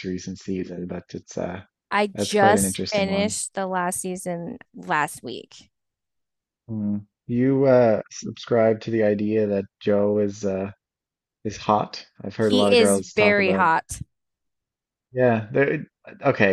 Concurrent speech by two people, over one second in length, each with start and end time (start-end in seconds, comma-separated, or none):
2.1-3.4, 12.4-13.7